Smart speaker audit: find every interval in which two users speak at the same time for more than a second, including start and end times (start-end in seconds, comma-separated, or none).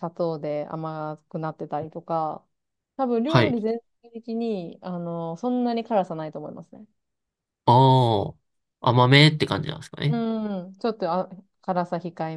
none